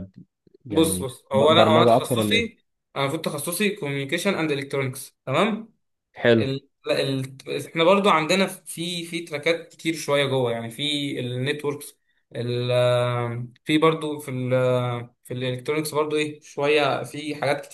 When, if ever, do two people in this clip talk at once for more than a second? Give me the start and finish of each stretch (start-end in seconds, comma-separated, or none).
0.7-2.5